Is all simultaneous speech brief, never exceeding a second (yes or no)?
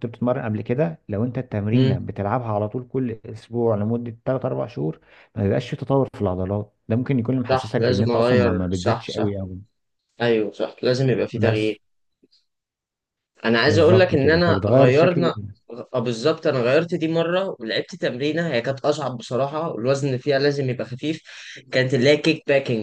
no